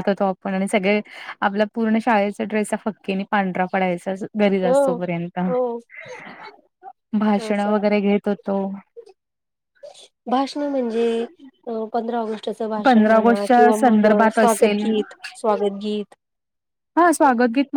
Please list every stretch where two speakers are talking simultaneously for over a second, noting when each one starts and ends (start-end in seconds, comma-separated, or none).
12.8-14.8